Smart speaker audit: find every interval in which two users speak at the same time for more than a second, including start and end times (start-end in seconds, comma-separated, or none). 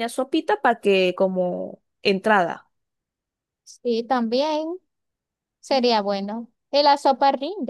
none